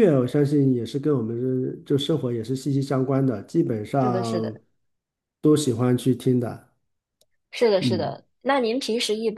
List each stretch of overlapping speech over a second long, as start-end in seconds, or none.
none